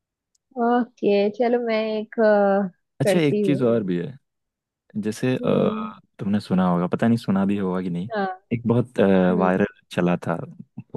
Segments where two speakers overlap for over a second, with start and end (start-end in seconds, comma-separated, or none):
none